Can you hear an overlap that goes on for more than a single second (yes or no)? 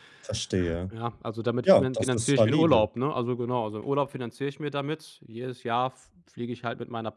yes